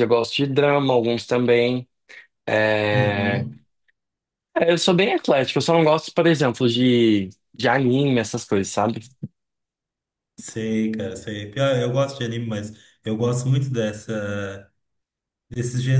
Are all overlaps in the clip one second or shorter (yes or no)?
yes